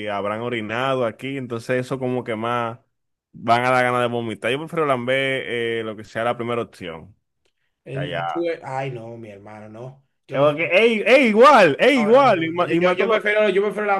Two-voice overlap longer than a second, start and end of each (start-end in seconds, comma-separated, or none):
11.9-13.2